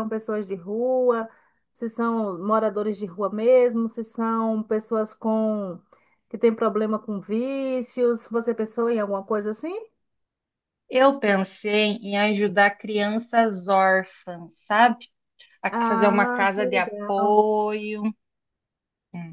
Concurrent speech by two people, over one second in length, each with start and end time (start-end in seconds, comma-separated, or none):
15.7-17.2